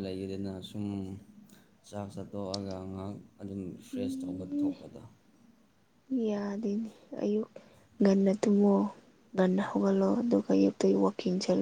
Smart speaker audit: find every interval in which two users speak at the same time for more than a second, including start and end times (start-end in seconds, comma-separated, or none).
none